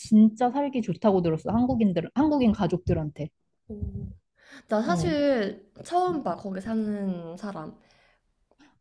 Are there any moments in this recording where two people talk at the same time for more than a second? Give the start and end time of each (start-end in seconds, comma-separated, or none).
none